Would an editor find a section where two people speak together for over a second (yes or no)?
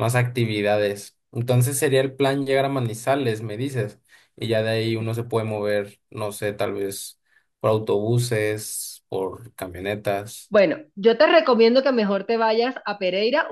no